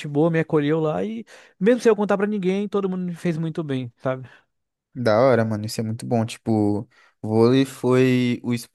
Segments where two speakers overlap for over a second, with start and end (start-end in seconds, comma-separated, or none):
none